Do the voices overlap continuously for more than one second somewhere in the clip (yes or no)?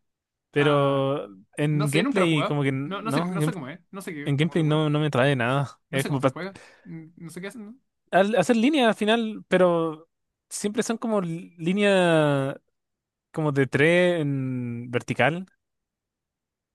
yes